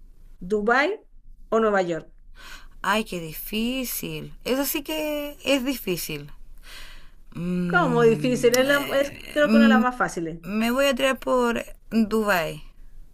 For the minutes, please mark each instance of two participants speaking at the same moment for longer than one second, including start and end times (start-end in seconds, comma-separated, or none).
7.7-9.8